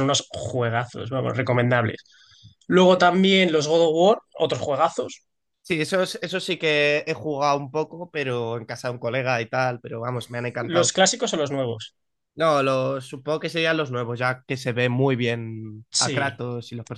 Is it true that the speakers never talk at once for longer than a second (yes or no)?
yes